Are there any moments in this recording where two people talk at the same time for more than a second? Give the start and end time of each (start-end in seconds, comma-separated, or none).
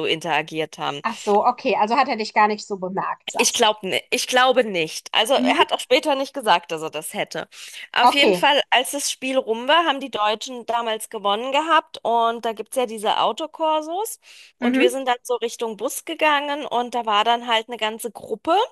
none